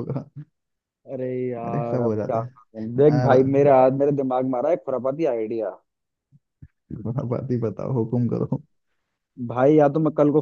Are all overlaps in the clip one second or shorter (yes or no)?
no